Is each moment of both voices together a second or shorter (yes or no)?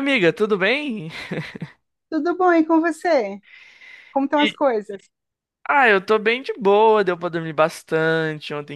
yes